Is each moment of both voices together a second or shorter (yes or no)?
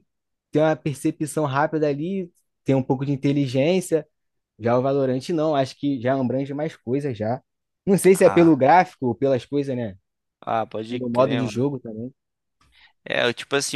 yes